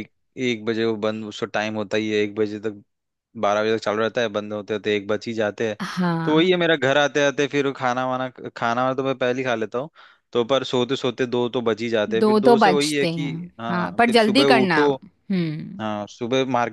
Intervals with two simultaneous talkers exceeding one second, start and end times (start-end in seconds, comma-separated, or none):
12.2-14.9